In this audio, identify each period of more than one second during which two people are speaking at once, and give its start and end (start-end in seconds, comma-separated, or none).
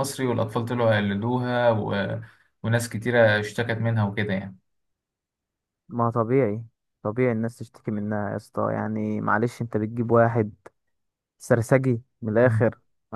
none